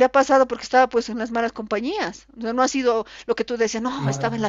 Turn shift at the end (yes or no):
no